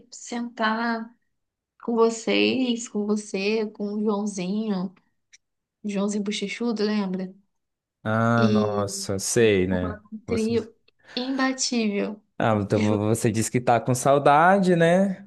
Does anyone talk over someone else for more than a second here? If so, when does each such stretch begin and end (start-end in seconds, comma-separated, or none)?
8.4-10.5